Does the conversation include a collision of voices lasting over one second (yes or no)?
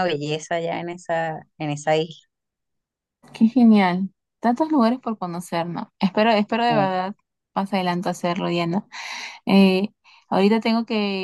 no